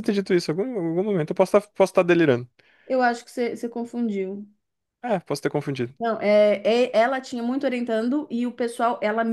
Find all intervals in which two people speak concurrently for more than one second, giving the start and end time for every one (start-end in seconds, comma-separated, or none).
none